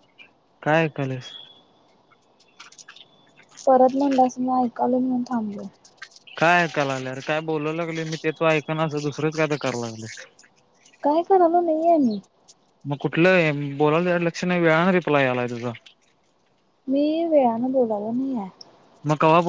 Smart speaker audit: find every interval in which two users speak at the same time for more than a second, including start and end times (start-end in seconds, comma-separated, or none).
none